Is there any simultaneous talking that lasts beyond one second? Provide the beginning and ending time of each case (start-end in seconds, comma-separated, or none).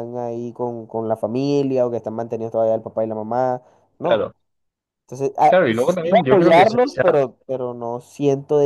5.4-7.1